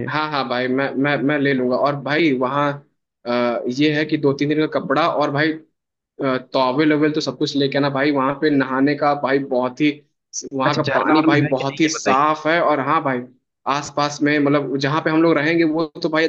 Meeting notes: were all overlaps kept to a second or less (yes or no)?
no